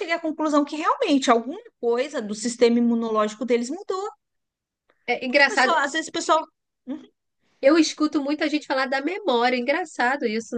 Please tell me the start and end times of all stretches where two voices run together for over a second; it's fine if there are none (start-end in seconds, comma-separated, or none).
none